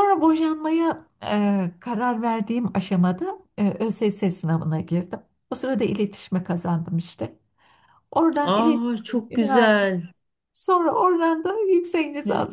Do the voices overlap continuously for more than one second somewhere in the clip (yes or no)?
yes